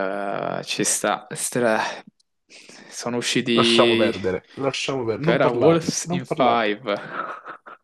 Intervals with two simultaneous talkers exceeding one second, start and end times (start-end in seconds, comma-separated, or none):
5.2-6.7